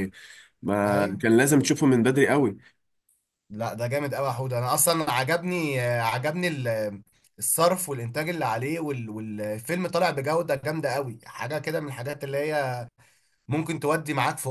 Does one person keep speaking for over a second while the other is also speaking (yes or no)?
no